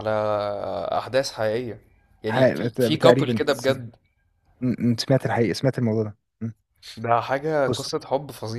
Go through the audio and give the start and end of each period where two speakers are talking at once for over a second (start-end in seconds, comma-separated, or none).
2.3-3.8